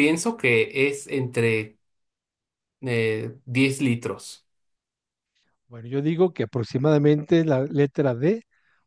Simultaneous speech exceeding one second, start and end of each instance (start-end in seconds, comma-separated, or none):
none